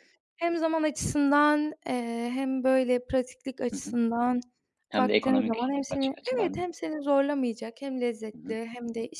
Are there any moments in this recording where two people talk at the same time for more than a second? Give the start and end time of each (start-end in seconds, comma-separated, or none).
5.0-6.7